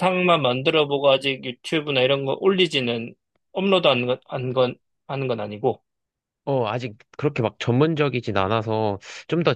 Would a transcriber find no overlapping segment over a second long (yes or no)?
yes